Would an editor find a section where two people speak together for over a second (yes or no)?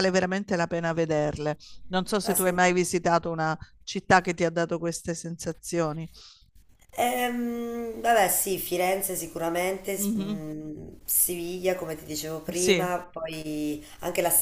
no